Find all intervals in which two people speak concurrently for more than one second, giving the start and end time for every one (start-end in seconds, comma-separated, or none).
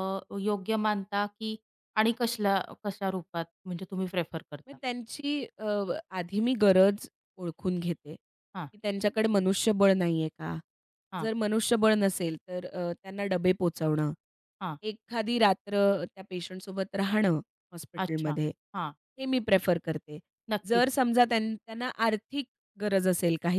none